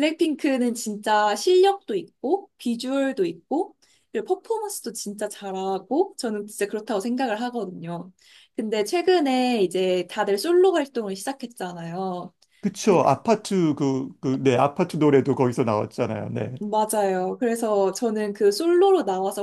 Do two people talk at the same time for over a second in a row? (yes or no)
no